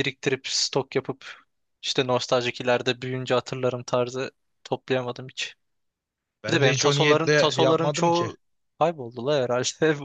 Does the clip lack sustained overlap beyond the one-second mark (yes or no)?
no